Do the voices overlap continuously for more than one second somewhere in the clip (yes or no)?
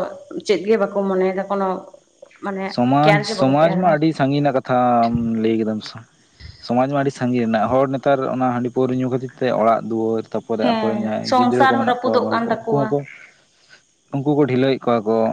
yes